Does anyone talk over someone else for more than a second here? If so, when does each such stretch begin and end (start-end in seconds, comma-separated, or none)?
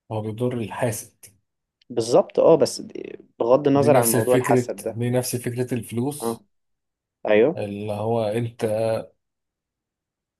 3.7-5.0